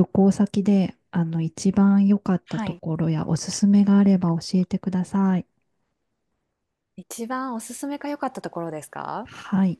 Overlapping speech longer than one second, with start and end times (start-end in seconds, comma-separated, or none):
none